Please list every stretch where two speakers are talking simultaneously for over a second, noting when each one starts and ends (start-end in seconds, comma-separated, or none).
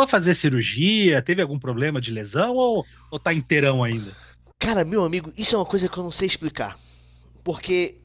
none